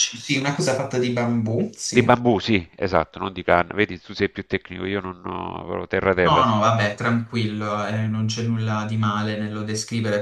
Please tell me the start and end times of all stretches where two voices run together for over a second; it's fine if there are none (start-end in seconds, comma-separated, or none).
none